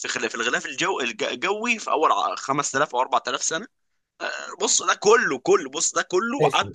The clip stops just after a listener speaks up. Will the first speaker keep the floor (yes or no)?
no